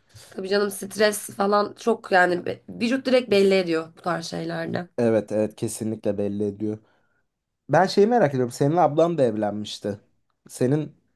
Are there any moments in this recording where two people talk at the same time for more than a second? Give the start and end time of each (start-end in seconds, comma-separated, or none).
none